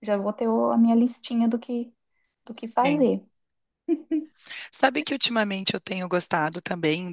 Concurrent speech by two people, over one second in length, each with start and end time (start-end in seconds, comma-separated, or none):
none